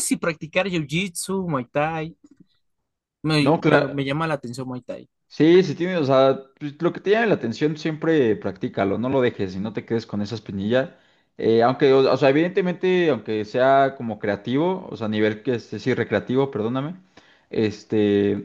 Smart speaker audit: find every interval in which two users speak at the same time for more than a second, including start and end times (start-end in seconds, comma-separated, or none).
none